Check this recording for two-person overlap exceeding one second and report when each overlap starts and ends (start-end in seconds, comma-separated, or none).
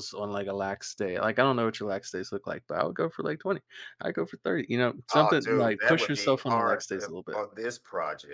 5.1-7.4